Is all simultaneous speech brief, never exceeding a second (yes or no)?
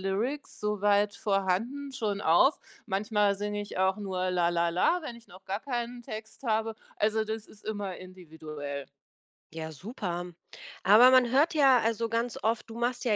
yes